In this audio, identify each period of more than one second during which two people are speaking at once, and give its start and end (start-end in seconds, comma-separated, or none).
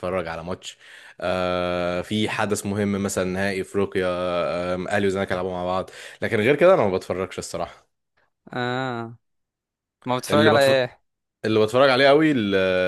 none